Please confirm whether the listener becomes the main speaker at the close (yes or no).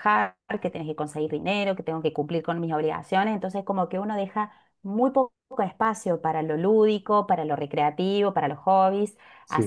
no